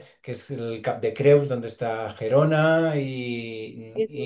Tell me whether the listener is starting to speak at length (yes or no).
yes